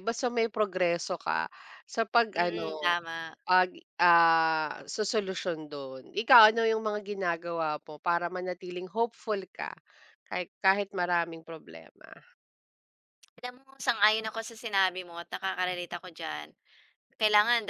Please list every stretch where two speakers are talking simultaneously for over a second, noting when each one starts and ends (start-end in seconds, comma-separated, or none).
none